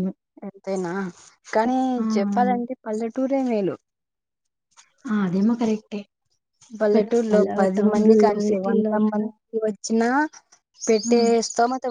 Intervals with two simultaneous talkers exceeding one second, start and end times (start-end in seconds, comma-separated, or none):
6.9-9.2